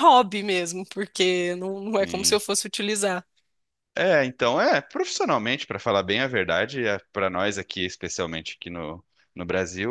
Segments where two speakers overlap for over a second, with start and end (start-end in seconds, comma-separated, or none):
none